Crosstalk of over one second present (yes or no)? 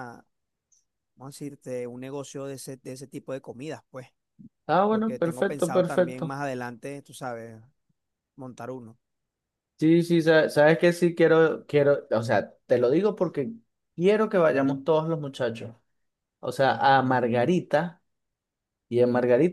yes